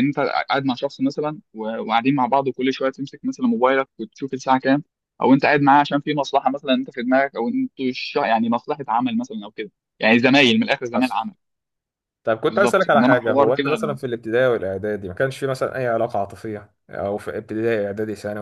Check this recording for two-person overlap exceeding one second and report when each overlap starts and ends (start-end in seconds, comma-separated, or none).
12.4-13.7